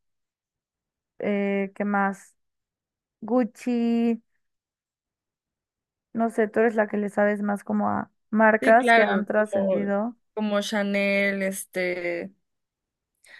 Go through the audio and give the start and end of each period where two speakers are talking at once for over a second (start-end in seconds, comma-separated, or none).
8.6-9.9